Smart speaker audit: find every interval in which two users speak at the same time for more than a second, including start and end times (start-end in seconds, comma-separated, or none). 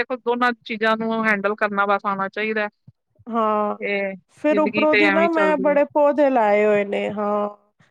4.4-5.8